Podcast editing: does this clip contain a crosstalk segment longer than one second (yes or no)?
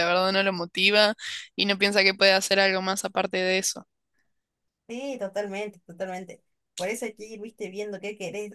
no